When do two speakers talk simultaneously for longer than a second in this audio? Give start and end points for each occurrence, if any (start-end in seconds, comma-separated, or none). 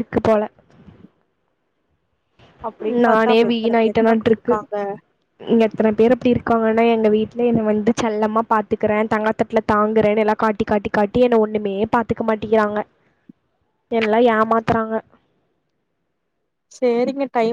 3.0-4.5